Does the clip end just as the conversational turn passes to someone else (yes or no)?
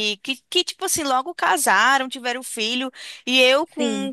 no